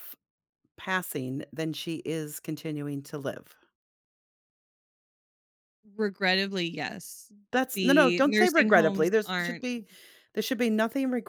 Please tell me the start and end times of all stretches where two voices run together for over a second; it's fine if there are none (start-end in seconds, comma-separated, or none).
7.7-9.7